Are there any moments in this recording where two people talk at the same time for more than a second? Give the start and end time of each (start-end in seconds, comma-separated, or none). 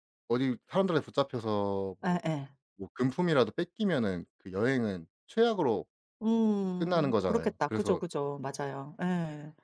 6.8-8.0